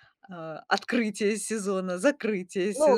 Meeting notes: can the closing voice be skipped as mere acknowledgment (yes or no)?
no